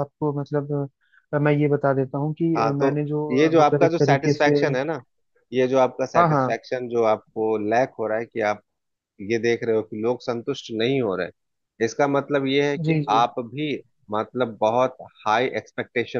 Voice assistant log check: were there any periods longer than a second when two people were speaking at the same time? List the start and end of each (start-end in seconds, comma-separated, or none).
2.6-4.5